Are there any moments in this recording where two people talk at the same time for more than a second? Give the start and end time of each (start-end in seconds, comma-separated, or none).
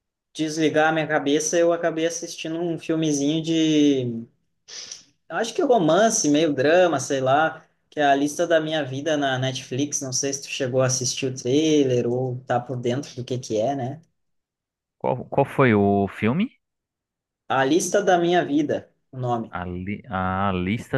none